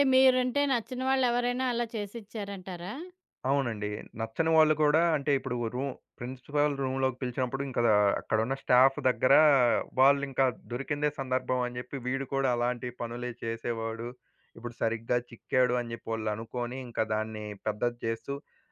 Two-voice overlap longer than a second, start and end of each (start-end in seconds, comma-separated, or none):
none